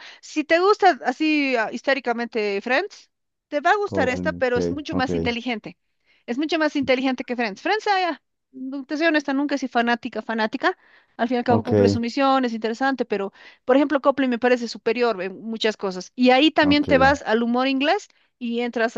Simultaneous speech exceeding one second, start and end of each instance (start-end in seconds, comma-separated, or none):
3.8-5.1